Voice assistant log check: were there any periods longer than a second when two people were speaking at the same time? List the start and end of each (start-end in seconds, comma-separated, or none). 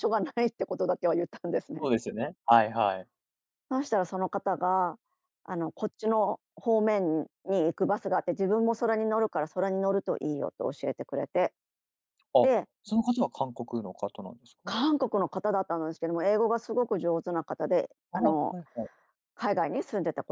none